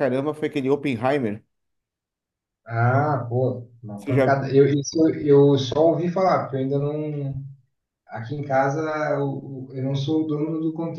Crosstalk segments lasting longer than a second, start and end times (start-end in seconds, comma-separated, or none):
none